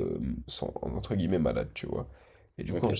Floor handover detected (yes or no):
no